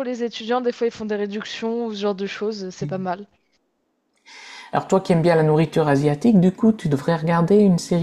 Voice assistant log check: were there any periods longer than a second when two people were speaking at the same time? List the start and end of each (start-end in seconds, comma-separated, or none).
none